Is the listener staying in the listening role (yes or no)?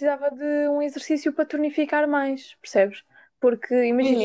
yes